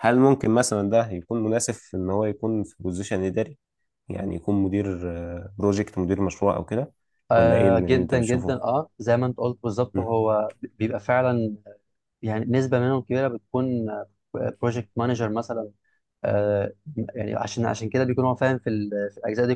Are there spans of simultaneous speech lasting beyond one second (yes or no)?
yes